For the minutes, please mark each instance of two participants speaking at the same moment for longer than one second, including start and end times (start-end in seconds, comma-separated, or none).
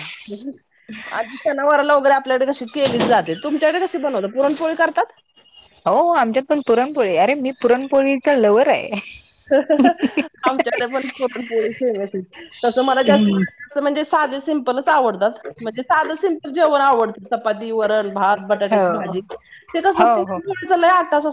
none